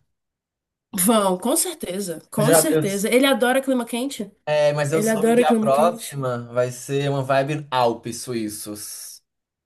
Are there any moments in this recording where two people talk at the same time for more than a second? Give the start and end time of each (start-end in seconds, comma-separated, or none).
4.9-6.2